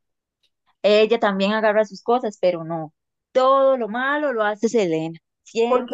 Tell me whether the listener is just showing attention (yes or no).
no